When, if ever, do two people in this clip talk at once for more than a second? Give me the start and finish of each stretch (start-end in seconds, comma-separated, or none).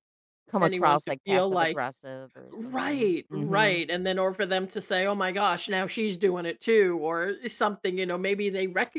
0.6-1.8, 2.5-3.8